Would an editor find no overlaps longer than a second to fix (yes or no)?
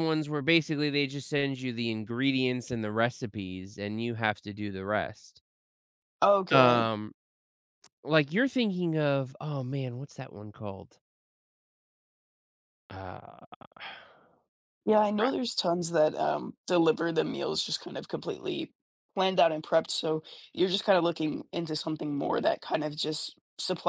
yes